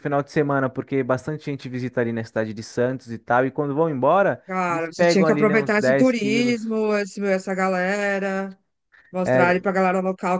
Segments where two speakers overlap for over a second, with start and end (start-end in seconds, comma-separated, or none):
4.5-6.6